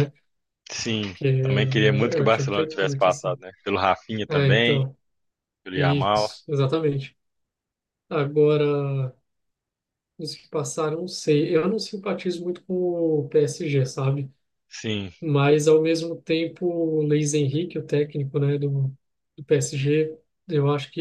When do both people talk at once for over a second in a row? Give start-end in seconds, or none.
2.2-3.4